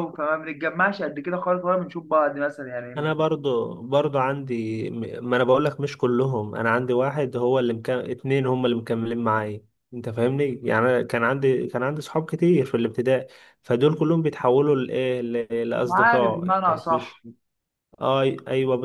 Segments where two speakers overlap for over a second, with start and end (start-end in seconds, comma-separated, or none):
15.9-17.2